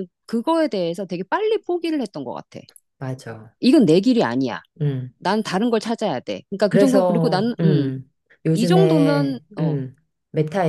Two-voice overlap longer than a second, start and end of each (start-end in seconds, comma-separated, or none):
6.7-7.9, 8.5-9.8